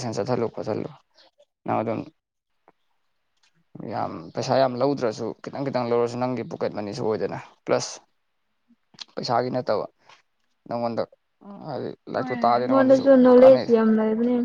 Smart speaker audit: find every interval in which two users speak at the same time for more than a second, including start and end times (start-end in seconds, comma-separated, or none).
12.2-13.7